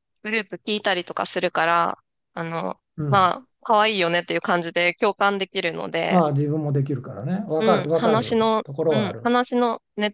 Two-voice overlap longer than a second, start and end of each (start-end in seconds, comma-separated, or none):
7.6-9.3